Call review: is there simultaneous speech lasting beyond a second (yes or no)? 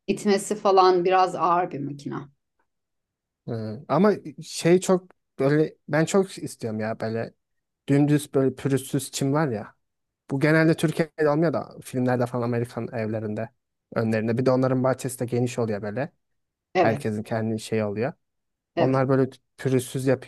no